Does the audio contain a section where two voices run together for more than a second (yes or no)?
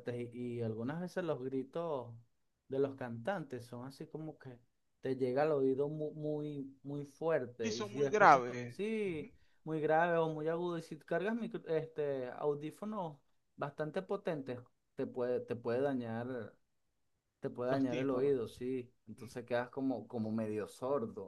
yes